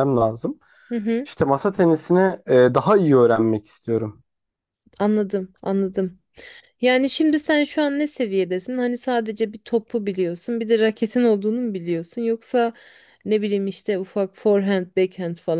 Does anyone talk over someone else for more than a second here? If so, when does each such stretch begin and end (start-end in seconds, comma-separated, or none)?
none